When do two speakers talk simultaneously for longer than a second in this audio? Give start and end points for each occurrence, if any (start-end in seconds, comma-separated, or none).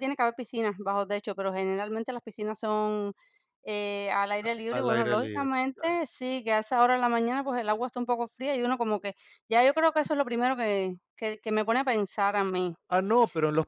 4.7-6.0